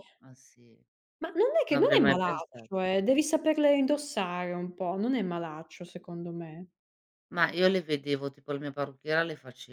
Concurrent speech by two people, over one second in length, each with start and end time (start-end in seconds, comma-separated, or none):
1.7-2.9